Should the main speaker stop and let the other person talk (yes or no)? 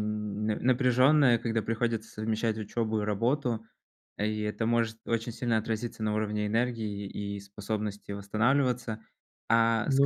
no